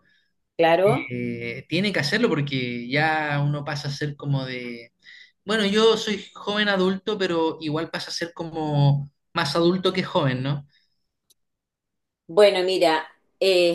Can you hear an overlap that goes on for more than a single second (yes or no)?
no